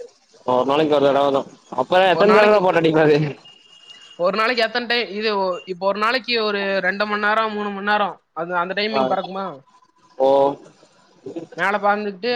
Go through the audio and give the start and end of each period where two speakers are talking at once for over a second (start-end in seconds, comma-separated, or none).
none